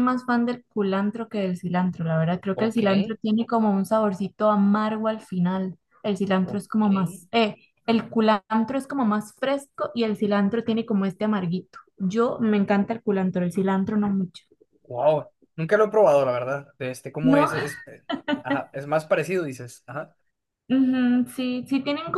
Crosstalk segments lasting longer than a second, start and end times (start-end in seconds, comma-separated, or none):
none